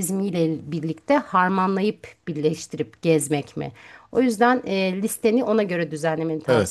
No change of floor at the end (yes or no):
no